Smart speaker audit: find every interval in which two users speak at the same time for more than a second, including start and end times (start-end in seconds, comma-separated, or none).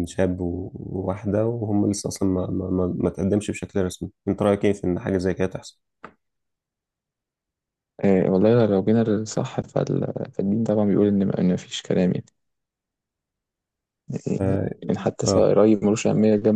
none